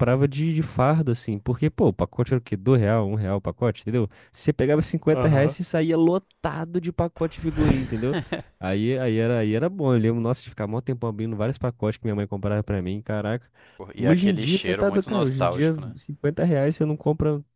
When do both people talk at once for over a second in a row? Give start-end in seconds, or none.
14.0-16.0